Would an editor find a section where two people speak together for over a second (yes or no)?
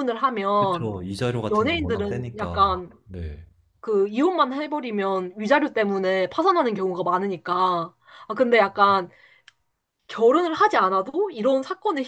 yes